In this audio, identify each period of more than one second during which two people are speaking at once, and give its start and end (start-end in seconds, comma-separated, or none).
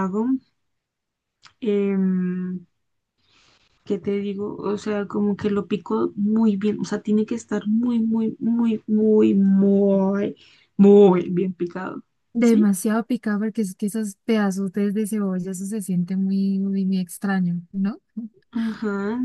none